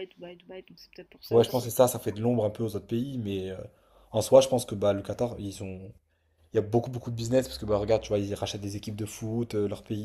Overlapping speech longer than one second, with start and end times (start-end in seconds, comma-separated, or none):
none